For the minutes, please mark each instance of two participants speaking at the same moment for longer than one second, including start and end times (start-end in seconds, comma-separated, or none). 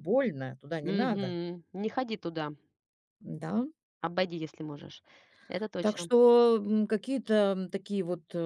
none